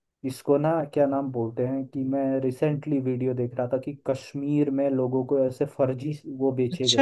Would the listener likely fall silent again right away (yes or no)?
no